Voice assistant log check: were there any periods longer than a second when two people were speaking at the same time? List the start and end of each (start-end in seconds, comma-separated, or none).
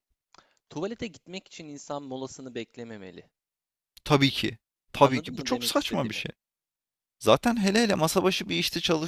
5.0-6.2